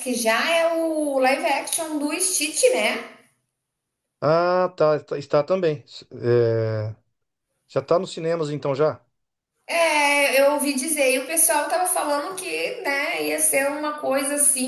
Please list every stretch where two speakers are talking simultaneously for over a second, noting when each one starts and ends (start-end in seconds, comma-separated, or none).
none